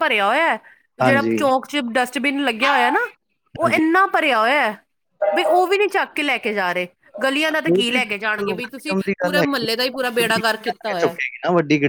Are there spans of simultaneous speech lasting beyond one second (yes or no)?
yes